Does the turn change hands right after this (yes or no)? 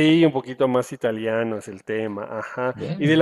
no